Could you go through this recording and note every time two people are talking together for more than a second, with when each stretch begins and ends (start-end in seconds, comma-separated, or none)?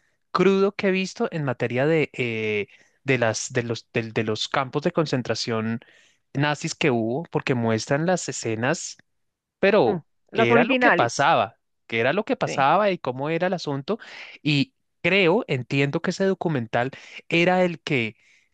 9.8-11.3